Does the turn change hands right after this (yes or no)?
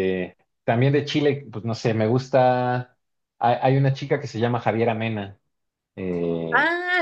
yes